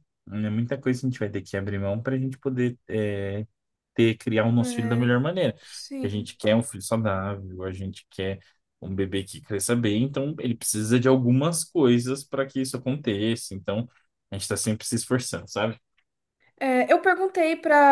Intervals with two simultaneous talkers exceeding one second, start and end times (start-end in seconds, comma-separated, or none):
none